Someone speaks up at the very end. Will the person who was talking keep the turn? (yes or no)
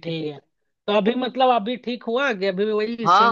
no